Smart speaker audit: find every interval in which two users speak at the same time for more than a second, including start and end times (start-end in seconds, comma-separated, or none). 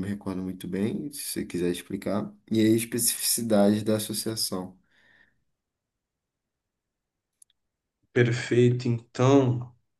none